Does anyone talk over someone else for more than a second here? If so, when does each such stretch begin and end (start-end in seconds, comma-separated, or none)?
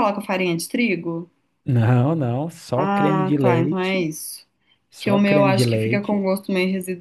2.8-4.1, 5.0-6.3